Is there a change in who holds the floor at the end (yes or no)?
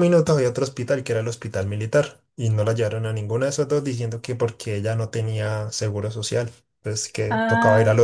yes